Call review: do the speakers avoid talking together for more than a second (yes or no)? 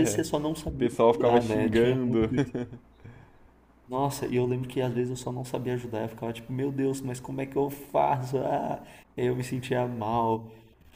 no